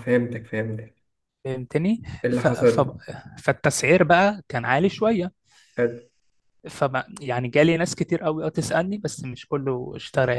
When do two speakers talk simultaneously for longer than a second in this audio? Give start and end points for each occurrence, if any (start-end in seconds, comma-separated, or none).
none